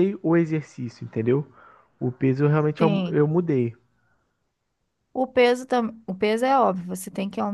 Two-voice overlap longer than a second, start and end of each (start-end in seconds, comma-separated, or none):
none